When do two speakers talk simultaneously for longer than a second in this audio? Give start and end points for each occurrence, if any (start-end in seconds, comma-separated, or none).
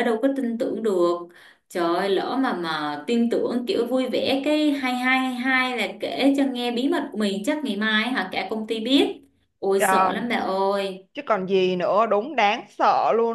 none